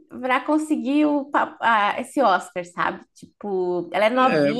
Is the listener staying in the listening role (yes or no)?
yes